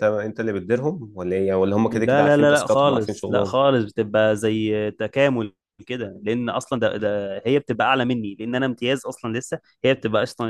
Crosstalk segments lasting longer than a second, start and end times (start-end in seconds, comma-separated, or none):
1.9-3.5